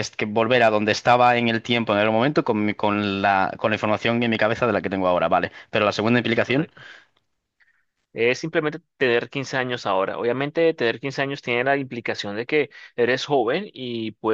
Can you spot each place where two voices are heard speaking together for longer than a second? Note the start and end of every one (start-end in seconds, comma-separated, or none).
none